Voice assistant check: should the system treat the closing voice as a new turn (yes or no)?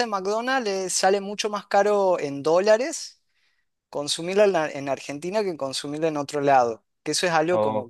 no